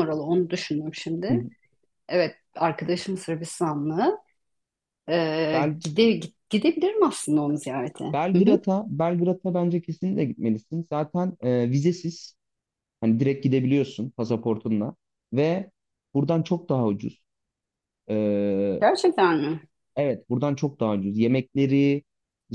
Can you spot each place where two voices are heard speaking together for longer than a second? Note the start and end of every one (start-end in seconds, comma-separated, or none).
none